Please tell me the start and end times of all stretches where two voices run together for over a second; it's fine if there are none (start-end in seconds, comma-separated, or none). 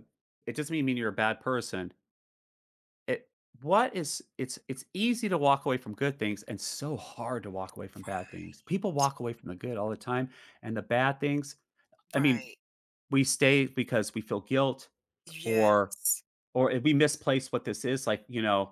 none